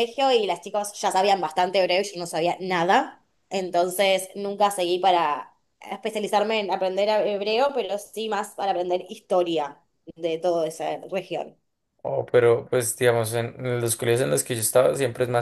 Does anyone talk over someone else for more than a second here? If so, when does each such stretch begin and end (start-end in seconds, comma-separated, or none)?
none